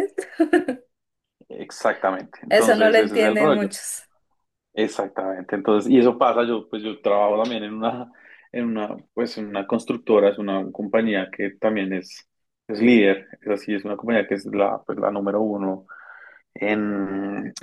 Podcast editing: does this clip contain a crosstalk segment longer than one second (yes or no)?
yes